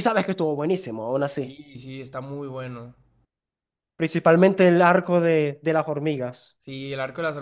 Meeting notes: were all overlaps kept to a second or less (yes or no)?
yes